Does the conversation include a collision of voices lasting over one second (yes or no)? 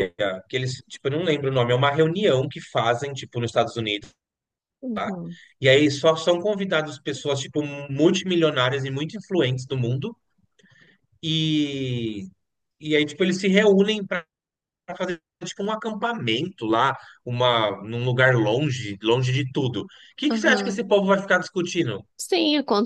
no